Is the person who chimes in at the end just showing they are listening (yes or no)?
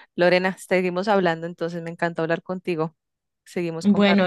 no